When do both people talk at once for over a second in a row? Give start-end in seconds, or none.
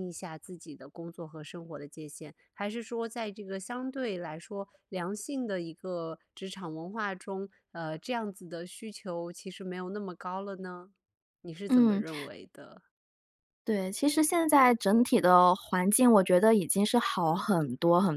none